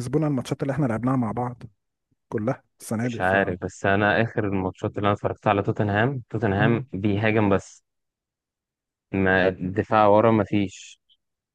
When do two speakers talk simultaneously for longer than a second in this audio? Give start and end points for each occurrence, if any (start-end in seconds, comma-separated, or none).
none